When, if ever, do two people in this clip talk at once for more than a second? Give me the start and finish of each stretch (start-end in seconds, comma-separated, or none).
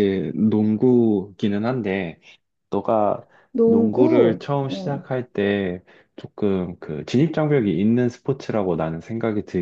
3.6-5.1